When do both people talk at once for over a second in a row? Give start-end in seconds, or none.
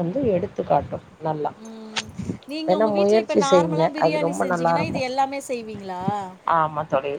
2.7-5.1